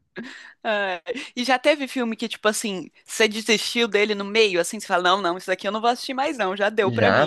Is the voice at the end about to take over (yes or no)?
yes